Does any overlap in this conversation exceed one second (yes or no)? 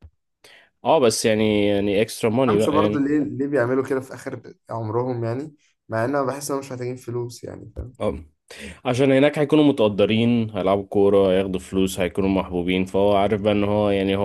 no